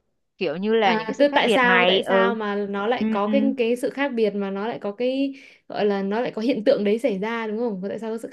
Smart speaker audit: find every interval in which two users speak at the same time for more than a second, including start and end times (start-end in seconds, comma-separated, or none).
0.8-2.3